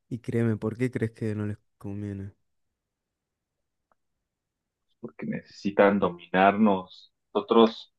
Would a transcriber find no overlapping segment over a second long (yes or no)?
yes